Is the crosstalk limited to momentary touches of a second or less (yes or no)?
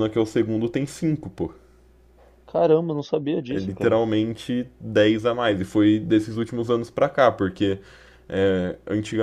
yes